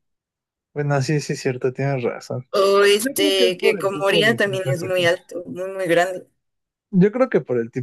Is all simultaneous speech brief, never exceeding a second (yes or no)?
no